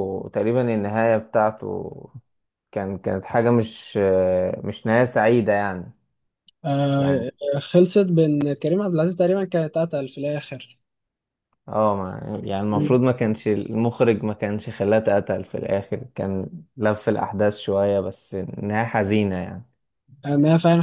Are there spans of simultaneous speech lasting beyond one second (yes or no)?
no